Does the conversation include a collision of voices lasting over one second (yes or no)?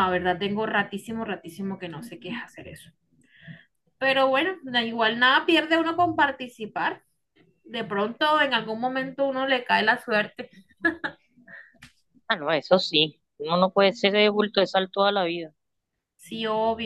no